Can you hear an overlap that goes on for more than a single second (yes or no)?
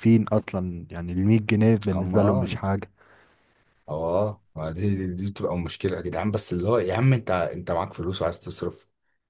no